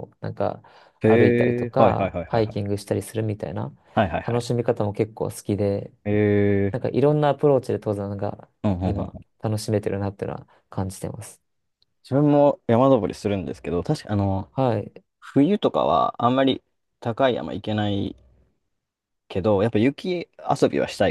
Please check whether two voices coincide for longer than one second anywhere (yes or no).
yes